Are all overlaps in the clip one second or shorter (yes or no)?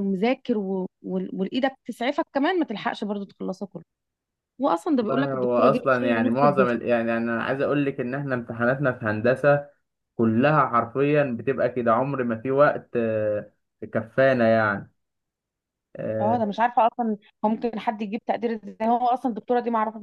no